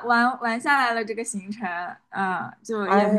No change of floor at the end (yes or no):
yes